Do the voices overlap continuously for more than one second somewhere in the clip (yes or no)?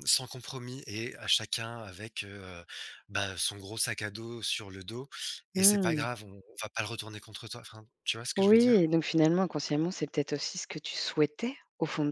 no